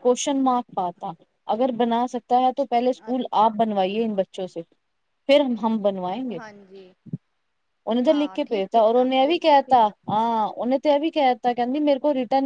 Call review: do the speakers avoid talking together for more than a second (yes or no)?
no